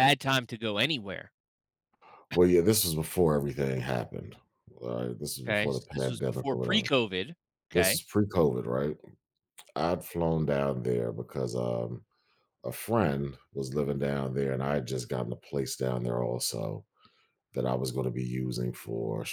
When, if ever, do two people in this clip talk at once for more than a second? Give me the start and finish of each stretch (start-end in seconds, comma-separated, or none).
5.5-6.9